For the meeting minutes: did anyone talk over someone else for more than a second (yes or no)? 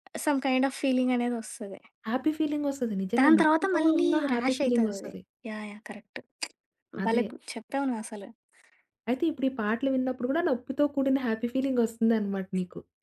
yes